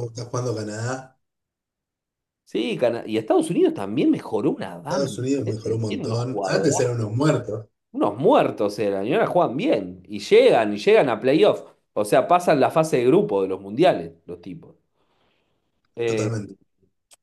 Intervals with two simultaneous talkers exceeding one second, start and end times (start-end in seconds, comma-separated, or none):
4.9-6.8